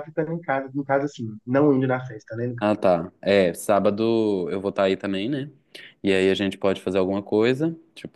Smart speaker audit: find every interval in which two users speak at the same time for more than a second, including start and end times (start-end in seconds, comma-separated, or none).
none